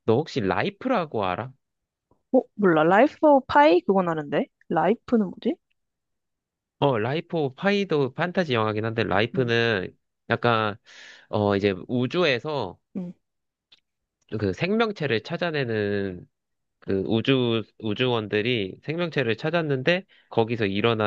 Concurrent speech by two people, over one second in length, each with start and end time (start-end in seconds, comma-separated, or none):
none